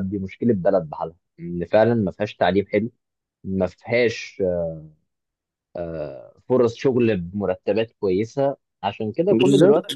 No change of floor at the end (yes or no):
yes